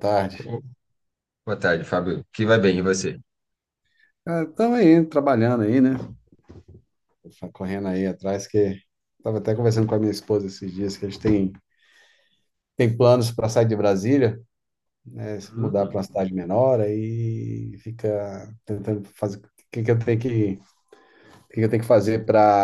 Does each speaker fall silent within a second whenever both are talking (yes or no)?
yes